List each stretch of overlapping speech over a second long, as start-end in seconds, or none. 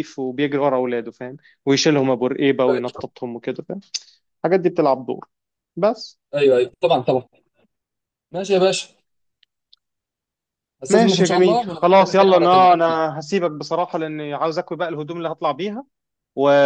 10.9-13.0